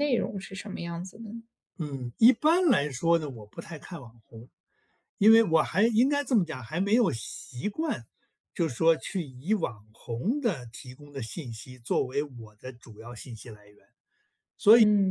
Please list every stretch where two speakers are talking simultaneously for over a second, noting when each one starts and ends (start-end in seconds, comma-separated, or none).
none